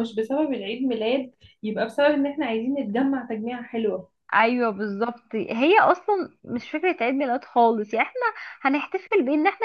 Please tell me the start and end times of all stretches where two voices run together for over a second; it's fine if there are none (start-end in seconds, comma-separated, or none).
none